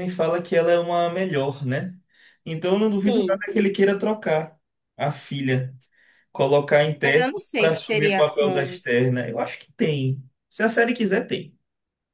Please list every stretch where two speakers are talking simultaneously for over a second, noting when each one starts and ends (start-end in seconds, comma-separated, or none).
7.0-8.8